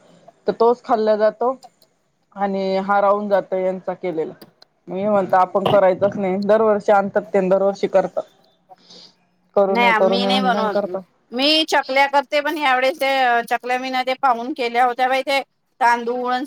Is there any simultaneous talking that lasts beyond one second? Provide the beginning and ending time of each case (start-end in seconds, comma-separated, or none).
9.7-11.0